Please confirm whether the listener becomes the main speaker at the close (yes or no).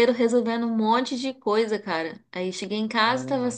no